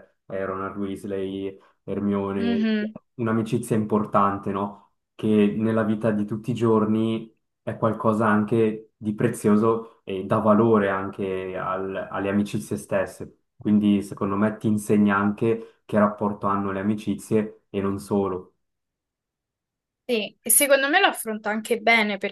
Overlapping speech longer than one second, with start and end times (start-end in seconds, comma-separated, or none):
none